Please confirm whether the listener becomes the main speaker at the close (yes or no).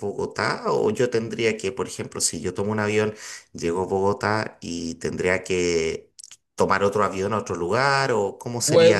yes